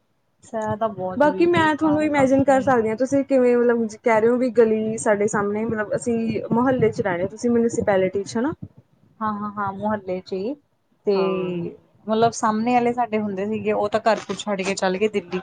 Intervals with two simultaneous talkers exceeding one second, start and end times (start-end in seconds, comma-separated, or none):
1.2-2.7